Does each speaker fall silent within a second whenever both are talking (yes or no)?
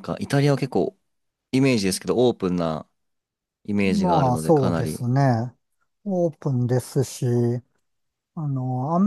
no